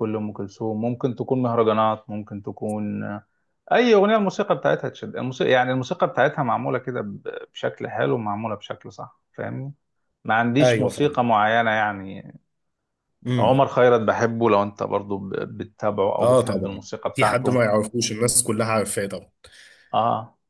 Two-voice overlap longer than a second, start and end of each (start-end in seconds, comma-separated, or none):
16.2-17.6